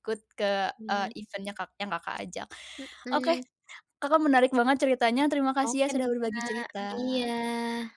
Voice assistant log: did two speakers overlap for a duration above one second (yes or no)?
yes